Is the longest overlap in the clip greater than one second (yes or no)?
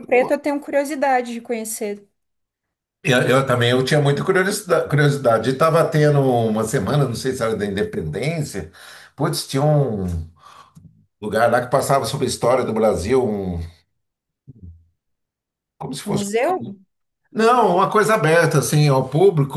no